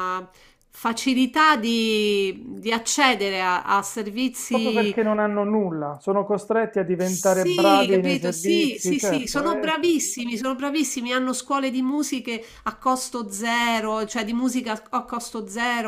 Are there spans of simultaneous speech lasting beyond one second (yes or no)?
yes